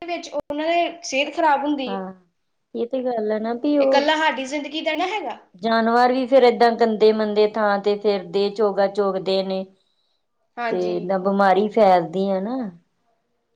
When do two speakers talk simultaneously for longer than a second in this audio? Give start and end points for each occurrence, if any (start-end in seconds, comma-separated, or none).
none